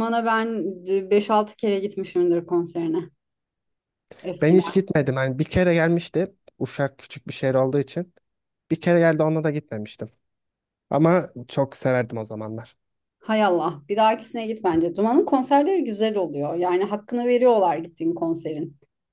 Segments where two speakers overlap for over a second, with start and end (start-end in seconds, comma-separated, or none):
none